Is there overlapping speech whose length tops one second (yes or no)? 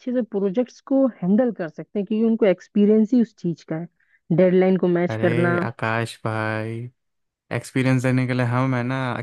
no